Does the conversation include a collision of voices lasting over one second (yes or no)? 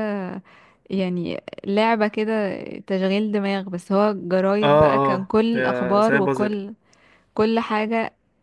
yes